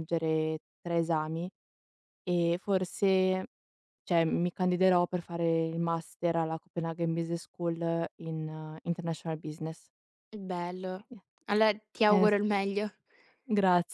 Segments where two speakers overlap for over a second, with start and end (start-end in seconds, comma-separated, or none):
none